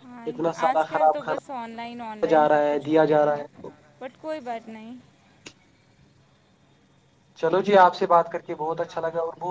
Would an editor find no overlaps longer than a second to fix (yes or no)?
no